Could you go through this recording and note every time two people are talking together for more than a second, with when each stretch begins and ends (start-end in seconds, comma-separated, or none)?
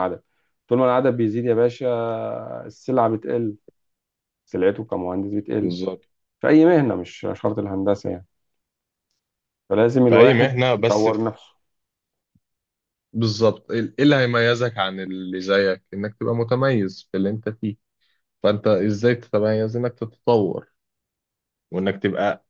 10.1-11.4